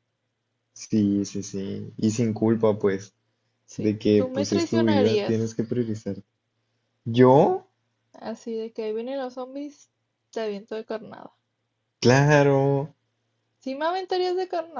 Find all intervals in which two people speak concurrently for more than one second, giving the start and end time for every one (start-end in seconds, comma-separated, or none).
3.7-5.5